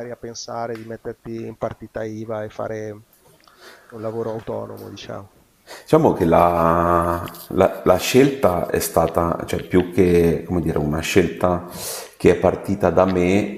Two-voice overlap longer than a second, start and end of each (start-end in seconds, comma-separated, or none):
none